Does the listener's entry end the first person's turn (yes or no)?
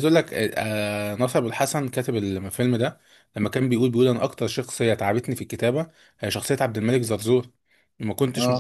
no